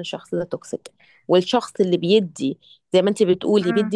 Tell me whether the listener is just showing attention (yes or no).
yes